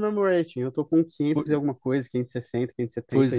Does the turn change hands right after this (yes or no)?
yes